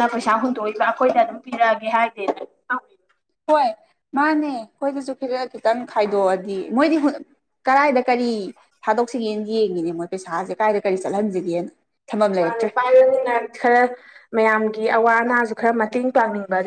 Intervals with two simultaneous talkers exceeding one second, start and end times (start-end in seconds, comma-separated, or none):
none